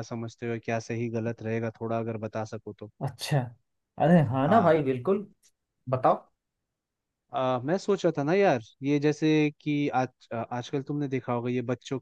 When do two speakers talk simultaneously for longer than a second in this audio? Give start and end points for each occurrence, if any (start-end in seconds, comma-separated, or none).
none